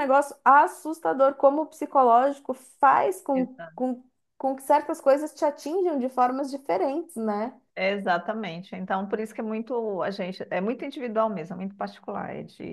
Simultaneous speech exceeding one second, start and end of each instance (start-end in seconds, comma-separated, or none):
none